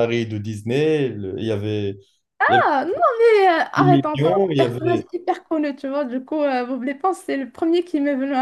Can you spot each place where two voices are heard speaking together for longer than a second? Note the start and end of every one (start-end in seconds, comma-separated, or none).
3.8-5.1